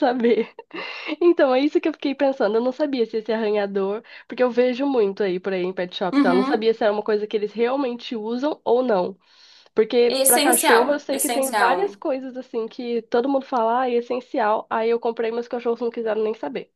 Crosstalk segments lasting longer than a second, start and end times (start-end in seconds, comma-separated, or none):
10.1-12.0